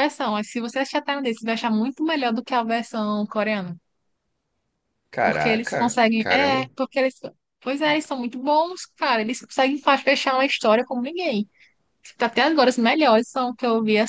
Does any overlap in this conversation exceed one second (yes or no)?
yes